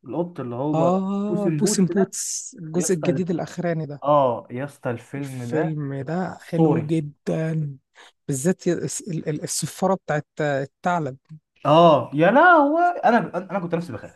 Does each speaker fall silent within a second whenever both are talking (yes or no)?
no